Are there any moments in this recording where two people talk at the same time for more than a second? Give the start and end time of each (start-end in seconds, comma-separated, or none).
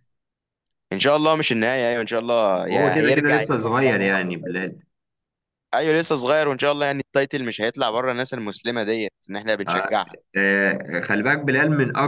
2.7-4.1